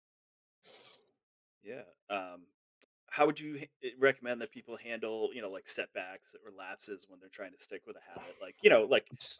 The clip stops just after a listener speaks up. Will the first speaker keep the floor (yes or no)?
yes